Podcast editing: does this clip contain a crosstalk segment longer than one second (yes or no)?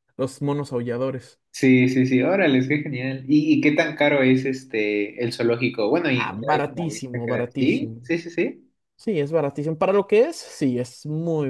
yes